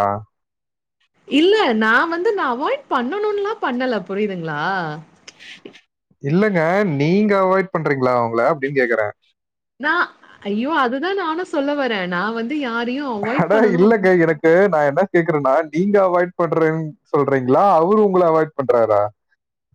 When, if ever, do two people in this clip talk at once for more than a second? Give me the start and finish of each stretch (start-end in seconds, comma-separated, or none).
none